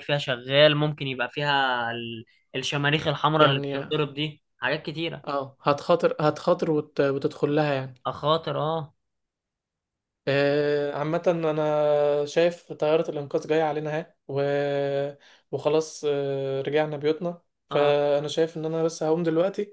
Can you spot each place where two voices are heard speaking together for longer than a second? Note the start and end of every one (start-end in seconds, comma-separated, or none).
none